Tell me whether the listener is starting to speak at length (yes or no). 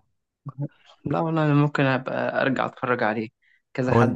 no